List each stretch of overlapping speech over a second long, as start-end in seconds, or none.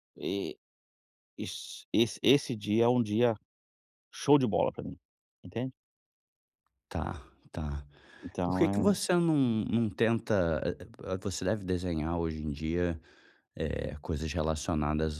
none